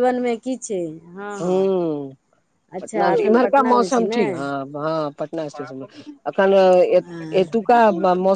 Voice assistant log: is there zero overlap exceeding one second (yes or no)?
no